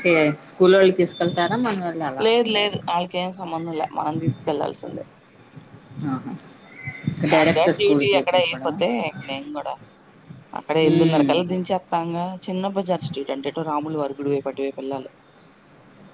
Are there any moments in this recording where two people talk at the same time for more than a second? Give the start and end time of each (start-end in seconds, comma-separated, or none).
7.3-8.8